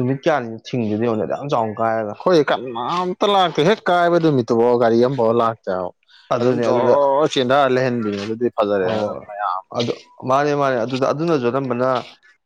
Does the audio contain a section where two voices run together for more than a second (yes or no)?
no